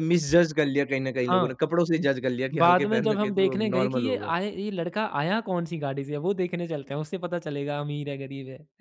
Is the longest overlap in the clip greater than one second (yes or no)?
yes